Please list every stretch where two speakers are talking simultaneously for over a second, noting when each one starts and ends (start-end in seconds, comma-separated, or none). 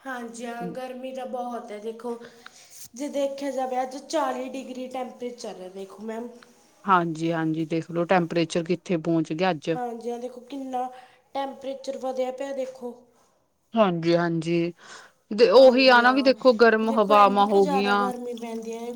none